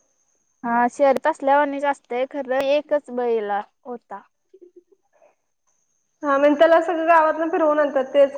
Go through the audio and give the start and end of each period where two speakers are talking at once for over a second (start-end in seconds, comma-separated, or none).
none